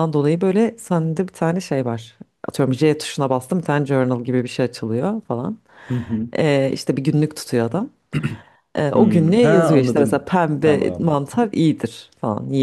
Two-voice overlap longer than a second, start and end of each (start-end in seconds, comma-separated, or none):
8.9-11.2